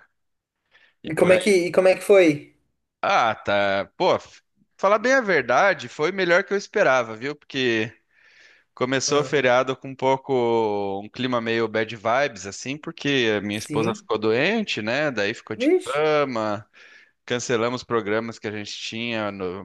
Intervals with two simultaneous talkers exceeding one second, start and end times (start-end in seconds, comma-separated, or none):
none